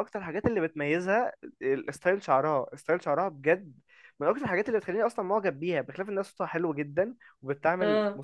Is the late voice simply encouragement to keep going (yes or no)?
yes